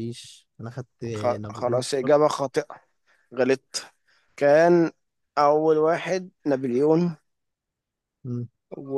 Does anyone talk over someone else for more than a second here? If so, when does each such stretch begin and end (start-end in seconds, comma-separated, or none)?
1.1-2.4